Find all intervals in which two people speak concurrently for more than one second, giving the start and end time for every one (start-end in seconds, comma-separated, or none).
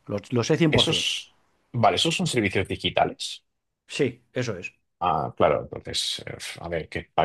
none